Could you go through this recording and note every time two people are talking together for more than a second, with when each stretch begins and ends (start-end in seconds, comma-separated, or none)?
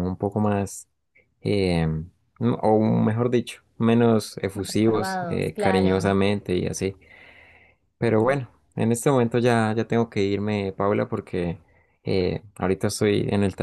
4.5-6.1